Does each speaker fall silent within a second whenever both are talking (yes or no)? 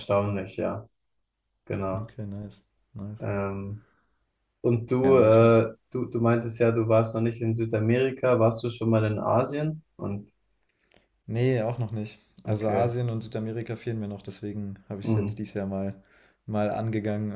yes